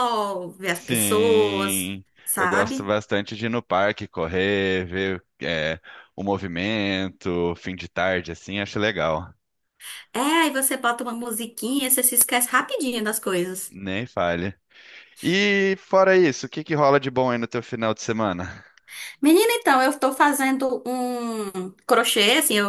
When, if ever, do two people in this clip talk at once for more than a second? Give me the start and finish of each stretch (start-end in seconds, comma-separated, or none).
0.7-2.9